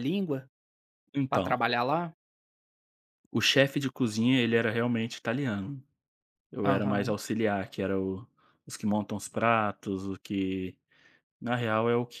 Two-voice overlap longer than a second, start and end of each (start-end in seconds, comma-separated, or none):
none